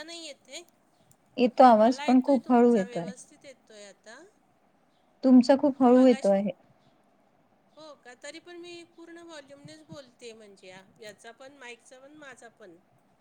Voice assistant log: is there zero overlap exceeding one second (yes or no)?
no